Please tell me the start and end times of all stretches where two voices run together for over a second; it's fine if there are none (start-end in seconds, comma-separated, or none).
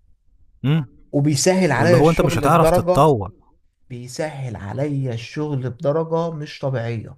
1.8-3.1